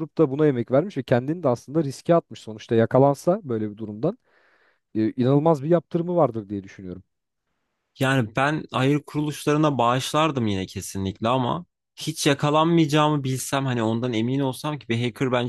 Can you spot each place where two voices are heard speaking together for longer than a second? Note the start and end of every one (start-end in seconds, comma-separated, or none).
none